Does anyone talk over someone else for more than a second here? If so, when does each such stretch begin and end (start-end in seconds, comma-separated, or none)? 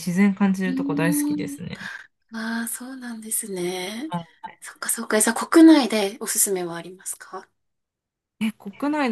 none